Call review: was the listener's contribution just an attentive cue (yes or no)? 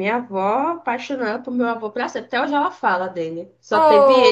no